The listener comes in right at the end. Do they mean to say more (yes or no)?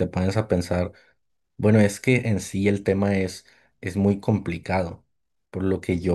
no